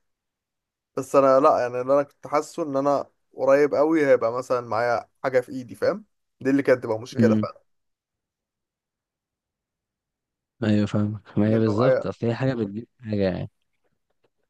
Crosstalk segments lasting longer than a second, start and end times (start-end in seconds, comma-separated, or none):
none